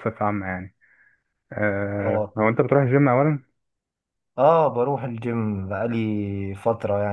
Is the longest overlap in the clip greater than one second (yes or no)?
no